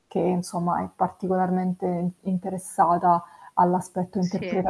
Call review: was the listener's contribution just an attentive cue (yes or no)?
yes